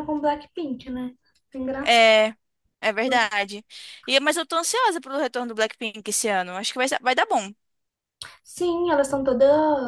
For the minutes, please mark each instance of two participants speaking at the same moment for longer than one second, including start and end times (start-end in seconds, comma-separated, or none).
none